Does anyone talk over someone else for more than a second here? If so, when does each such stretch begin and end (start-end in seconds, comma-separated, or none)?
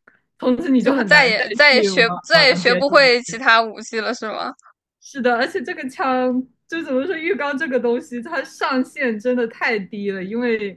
0.8-3.4